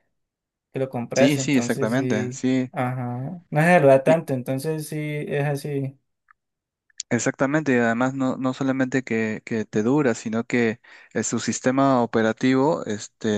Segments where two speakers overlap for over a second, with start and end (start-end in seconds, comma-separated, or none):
1.1-2.7